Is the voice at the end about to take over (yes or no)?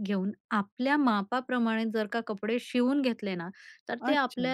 no